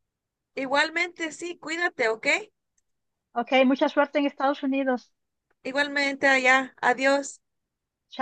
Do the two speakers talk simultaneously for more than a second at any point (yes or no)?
no